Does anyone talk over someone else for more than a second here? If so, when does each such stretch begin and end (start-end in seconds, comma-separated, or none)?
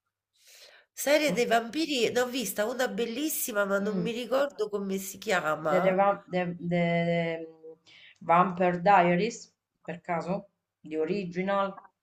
none